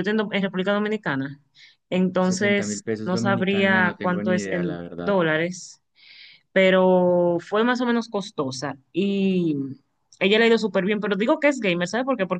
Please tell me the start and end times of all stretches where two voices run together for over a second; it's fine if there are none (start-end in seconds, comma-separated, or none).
2.2-5.1